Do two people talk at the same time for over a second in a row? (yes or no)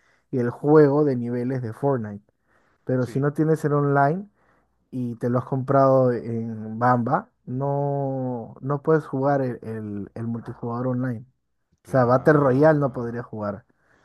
yes